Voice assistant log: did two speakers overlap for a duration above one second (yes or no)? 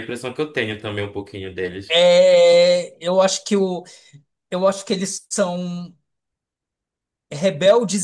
no